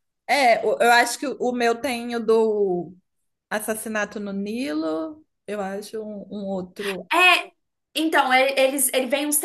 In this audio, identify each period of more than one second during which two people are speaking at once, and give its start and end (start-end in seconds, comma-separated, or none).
none